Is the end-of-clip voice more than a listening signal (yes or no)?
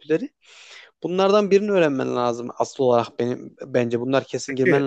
no